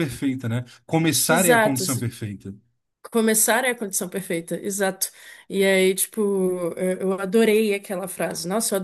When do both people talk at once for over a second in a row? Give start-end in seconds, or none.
none